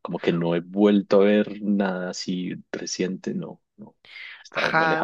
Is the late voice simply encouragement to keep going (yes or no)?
no